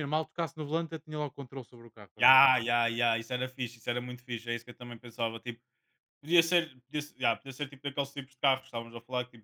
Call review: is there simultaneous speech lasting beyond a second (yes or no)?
no